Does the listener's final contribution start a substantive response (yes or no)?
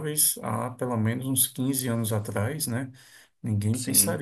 no